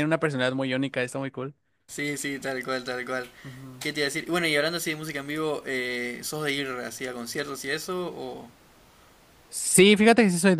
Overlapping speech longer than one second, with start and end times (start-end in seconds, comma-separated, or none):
none